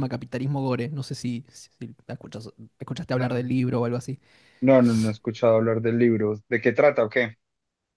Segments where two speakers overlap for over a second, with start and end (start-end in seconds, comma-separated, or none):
none